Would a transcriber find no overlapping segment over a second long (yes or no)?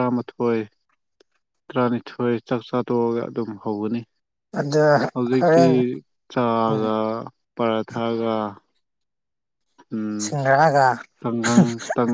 yes